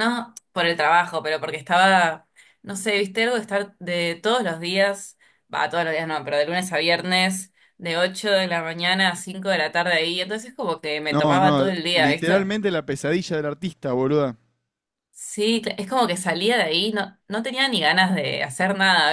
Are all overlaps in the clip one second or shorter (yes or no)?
no